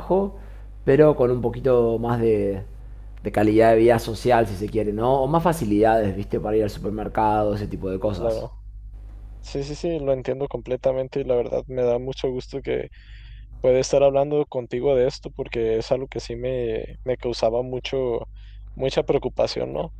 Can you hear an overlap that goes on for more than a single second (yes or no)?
no